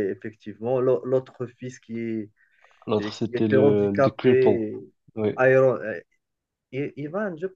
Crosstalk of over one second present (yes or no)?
yes